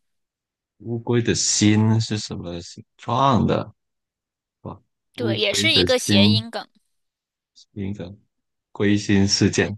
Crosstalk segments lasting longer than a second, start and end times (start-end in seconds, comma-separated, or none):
5.2-6.5